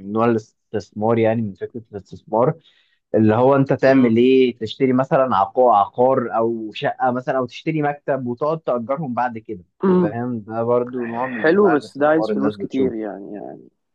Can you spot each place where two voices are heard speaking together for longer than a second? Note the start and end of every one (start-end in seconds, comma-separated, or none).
11.4-12.9